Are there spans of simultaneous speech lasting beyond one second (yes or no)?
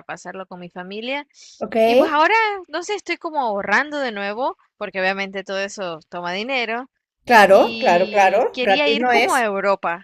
yes